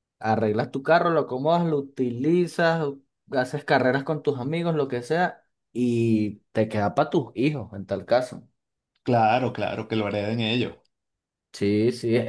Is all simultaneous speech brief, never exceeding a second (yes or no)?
yes